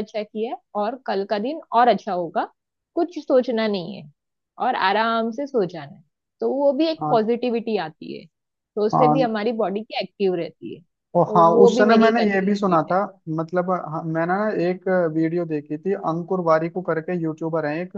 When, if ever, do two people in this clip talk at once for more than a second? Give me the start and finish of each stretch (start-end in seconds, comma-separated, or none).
11.2-13.0